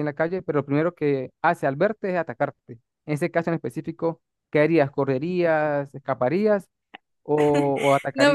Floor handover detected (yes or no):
yes